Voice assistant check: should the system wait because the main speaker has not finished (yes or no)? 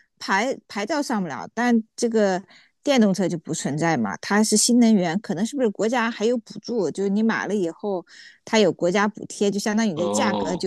yes